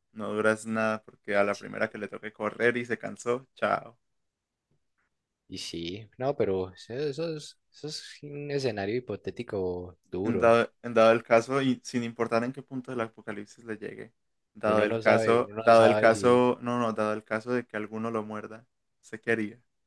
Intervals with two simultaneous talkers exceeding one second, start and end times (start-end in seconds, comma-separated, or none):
14.7-16.4